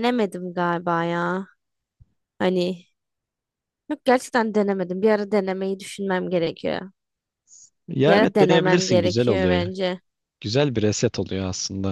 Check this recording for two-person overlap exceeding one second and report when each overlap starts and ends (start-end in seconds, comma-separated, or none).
8.1-9.7